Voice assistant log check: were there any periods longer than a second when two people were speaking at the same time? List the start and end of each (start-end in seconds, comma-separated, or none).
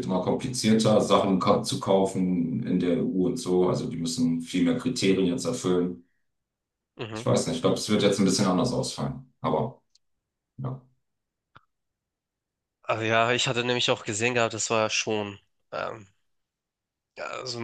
none